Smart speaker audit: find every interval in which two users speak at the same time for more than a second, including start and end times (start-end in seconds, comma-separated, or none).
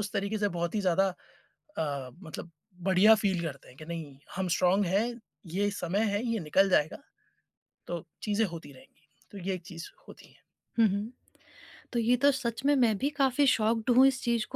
none